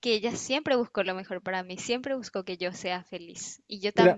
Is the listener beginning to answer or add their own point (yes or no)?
no